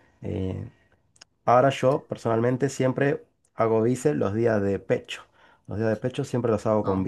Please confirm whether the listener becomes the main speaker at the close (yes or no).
no